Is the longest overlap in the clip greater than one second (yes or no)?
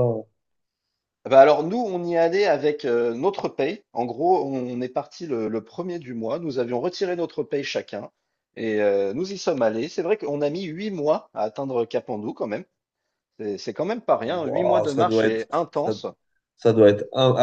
yes